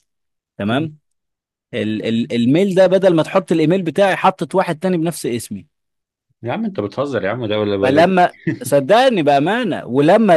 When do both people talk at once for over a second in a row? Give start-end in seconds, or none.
none